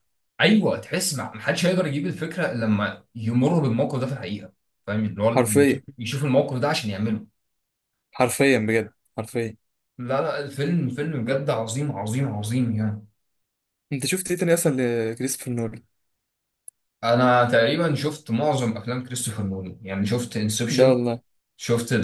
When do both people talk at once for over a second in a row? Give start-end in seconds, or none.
none